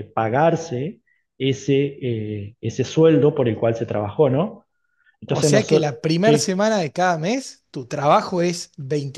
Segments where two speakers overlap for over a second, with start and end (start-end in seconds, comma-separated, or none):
5.2-6.6